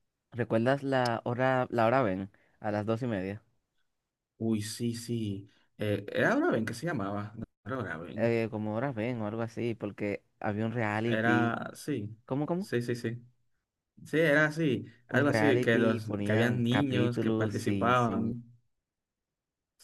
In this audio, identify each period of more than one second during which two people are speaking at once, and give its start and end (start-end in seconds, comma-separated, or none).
15.1-18.2